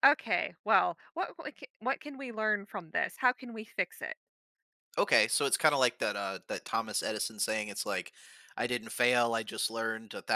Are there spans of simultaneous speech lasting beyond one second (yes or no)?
no